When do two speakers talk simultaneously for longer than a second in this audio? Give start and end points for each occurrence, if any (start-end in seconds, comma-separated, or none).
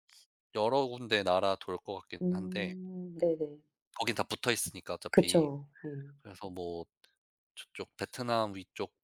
none